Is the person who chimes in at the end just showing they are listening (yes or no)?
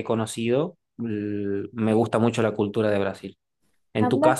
yes